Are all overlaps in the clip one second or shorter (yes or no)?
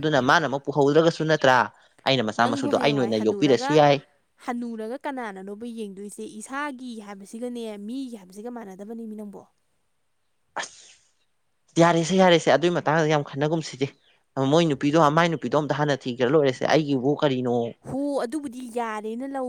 no